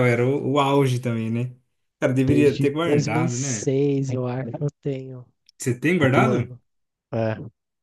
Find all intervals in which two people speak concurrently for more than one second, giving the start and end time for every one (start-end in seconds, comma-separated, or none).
2.1-3.7